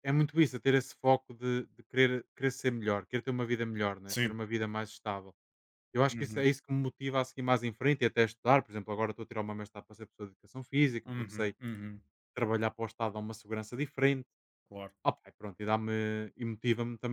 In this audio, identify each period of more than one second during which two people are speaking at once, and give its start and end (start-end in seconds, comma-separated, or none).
none